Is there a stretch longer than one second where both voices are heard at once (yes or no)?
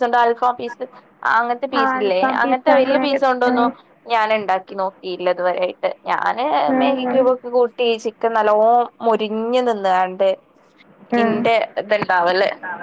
yes